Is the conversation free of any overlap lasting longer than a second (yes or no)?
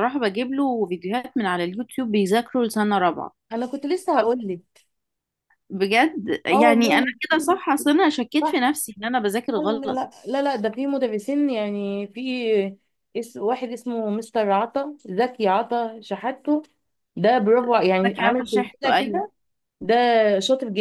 no